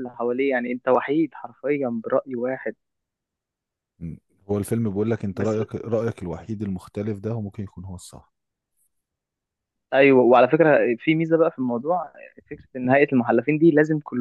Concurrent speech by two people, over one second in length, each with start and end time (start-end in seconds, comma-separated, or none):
none